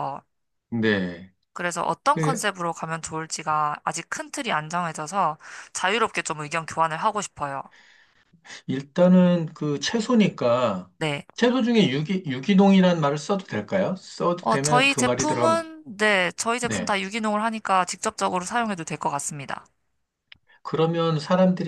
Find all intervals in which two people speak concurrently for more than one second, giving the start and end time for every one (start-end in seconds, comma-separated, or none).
14.4-15.6